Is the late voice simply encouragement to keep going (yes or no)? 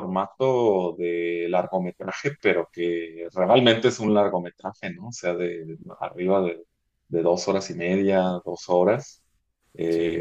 yes